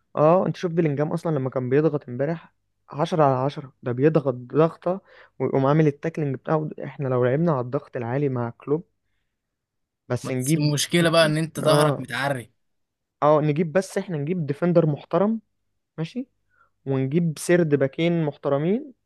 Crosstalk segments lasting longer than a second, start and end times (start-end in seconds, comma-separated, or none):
10.2-12.1